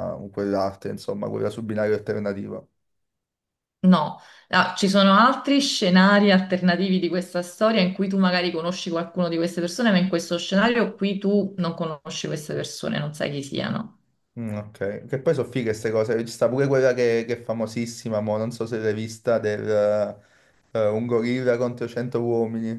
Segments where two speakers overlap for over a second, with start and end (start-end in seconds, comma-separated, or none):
none